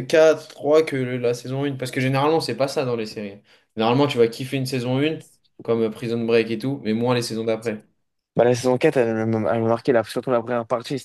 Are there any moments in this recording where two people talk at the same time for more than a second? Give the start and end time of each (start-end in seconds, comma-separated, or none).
none